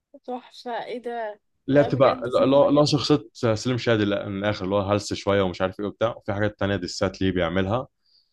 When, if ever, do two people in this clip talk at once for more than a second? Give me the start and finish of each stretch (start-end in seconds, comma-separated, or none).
1.7-3.0